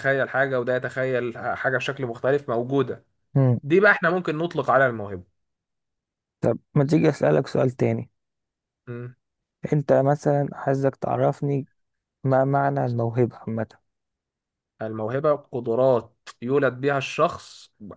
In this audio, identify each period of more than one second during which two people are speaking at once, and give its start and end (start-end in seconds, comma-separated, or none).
none